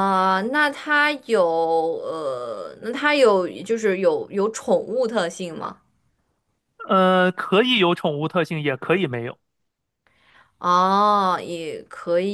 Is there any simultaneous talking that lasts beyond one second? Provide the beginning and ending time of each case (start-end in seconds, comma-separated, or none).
none